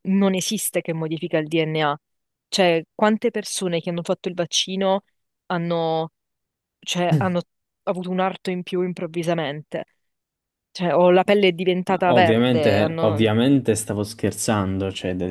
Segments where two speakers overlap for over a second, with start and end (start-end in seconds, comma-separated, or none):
12.1-13.3